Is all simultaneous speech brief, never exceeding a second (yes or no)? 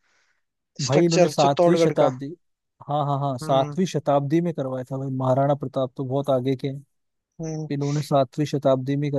no